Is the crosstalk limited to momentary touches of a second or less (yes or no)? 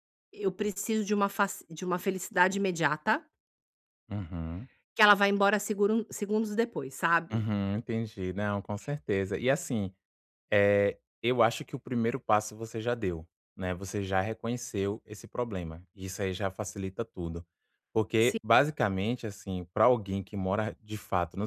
yes